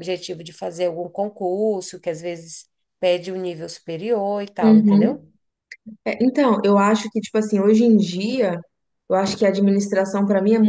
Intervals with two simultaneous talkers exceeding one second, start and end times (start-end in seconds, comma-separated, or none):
none